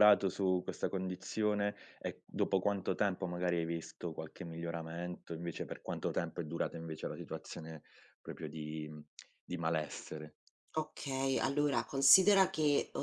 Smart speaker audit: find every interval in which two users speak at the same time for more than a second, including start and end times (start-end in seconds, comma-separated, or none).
none